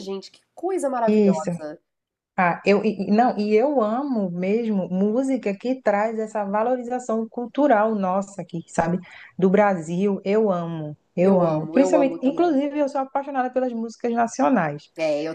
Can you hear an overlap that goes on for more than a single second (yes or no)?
yes